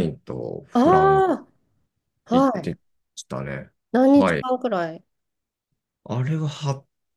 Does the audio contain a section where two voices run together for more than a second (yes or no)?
no